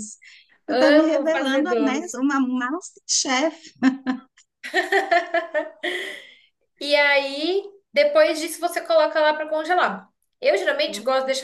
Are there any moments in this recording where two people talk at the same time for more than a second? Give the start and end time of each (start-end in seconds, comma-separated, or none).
0.7-2.1